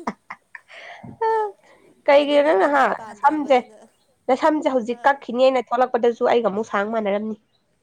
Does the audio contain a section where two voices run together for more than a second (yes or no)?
yes